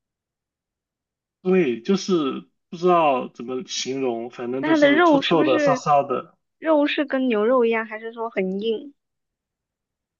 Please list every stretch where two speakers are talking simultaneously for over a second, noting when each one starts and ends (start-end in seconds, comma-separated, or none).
4.6-5.8